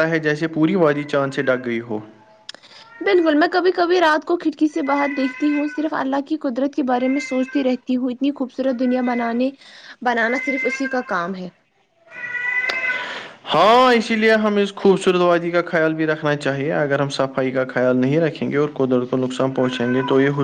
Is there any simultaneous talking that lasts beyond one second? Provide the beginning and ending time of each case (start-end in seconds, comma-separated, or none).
none